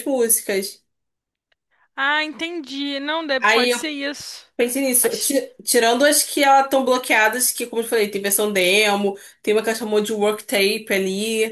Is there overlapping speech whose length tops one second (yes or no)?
no